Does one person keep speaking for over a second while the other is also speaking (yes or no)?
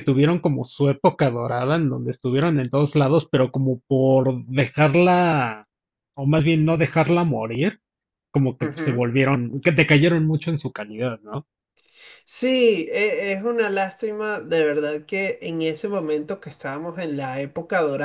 no